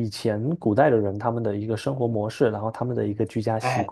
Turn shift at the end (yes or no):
yes